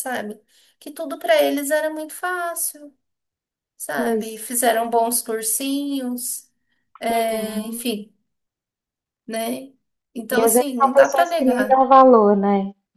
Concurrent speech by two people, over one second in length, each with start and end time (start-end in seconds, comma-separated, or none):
10.3-11.8